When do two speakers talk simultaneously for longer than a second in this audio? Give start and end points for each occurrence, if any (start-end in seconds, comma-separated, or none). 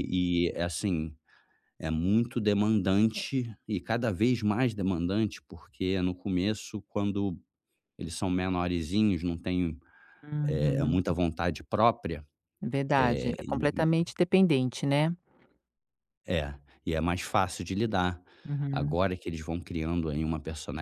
none